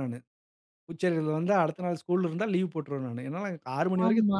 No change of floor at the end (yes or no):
no